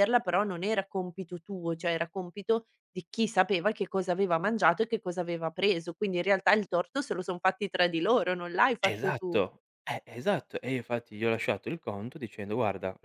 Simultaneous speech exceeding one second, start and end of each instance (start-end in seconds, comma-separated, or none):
none